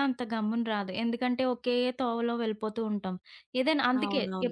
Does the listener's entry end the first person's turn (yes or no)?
no